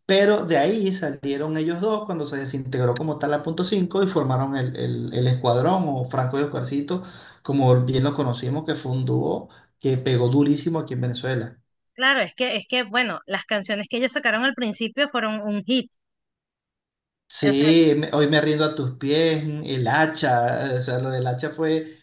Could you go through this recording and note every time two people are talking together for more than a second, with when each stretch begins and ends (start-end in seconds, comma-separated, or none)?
none